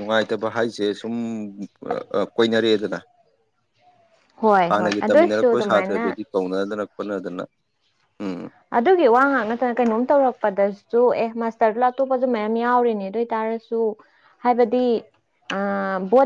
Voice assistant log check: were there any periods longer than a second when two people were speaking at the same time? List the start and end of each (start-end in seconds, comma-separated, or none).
4.7-6.2